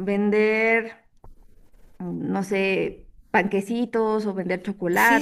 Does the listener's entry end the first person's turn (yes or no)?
yes